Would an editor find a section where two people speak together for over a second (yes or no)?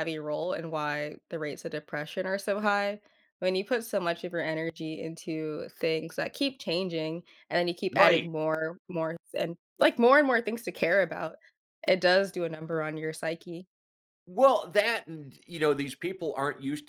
no